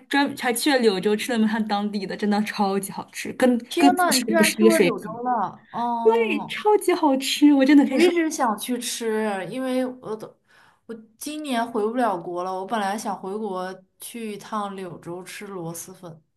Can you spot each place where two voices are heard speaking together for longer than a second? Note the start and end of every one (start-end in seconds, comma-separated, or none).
3.7-5.2